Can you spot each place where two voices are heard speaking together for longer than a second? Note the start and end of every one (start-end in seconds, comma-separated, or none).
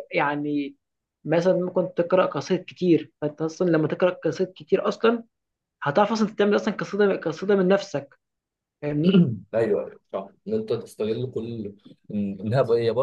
none